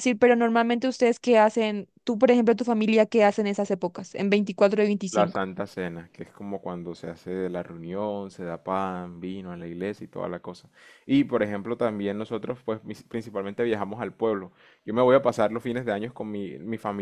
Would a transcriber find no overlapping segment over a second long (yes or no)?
yes